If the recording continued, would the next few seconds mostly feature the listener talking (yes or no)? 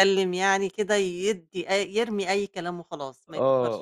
yes